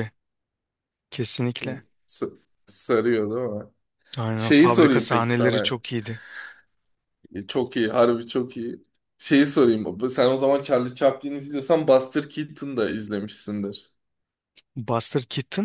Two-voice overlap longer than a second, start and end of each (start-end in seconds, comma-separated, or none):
4.4-5.8